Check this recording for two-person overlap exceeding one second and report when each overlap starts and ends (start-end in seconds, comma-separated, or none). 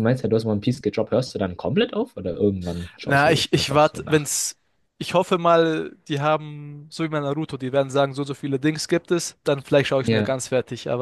3.0-4.3